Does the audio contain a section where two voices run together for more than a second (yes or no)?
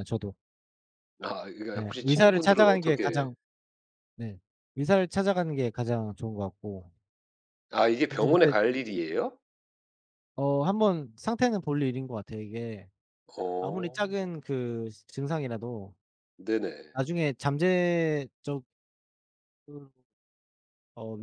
yes